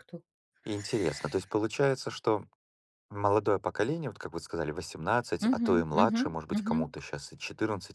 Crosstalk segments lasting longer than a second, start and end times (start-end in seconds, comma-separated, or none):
5.4-6.9